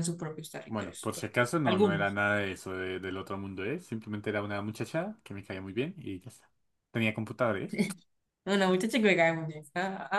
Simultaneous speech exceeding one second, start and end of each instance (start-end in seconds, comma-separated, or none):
0.7-2.2